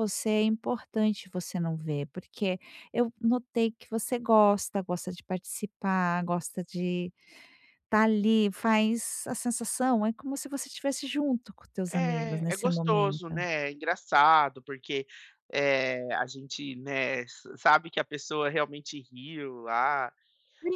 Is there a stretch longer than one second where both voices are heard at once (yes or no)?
yes